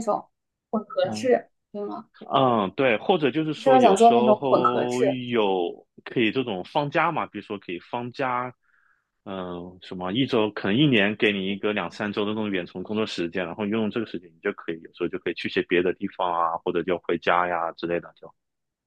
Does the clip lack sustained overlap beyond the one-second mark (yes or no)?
no